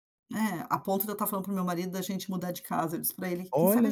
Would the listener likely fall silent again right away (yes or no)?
yes